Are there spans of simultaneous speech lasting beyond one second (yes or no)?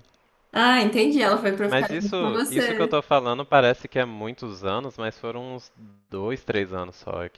yes